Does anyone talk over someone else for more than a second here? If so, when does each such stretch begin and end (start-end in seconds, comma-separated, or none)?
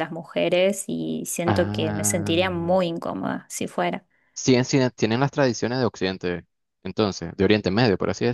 1.4-2.7